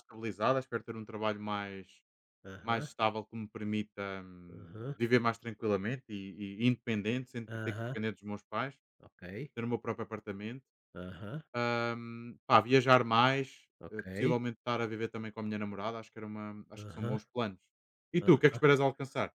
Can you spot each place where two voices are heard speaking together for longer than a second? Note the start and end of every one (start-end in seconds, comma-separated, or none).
none